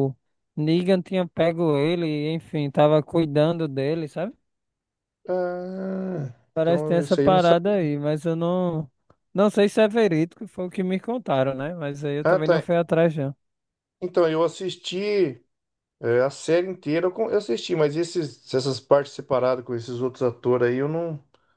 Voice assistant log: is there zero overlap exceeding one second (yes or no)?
no